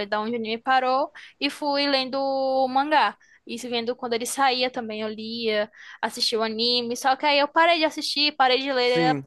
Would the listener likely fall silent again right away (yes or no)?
yes